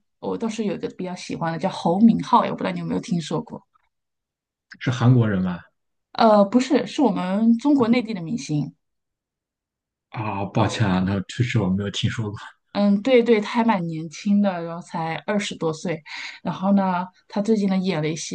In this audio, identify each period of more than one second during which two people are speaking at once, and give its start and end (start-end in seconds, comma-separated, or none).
none